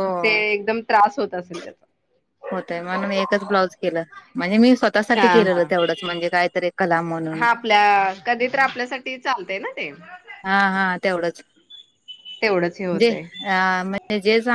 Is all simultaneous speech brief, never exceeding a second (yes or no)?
yes